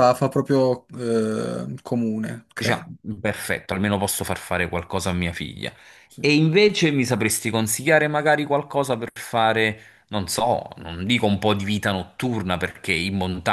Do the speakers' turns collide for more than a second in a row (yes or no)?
no